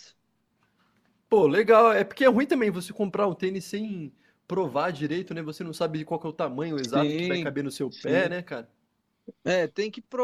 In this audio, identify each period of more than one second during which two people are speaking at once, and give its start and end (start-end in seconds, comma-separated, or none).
6.8-8.4